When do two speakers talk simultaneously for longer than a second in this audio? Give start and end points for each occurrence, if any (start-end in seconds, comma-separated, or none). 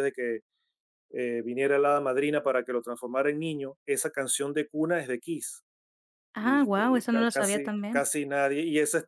6.4-8.1